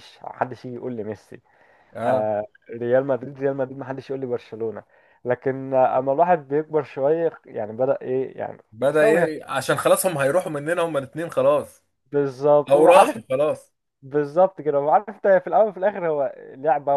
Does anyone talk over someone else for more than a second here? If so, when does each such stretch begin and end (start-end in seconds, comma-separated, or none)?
none